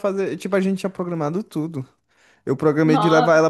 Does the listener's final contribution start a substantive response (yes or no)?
no